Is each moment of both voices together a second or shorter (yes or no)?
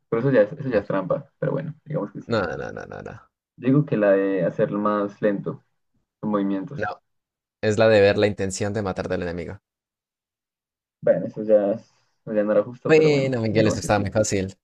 no